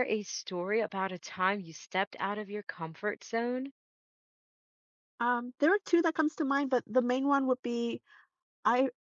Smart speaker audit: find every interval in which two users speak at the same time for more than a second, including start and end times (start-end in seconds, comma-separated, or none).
none